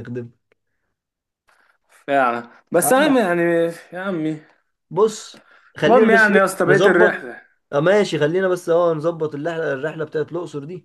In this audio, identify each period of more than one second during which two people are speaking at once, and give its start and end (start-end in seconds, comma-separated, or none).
5.8-7.4